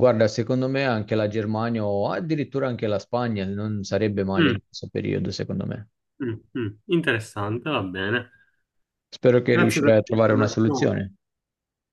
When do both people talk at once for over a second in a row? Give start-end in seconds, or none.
9.5-10.9